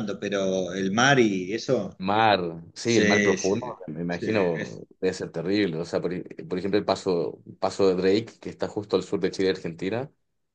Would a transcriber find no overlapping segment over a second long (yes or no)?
no